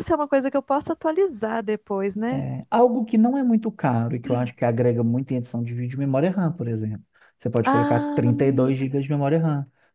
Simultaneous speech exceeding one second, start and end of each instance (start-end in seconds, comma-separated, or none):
7.6-9.0